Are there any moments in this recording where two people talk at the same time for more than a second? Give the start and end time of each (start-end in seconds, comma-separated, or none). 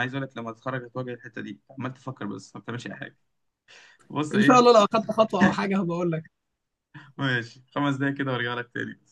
none